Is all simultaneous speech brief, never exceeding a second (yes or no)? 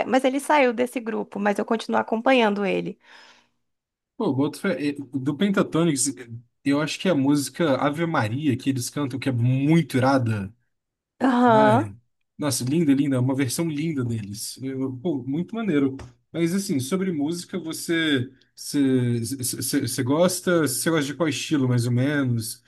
yes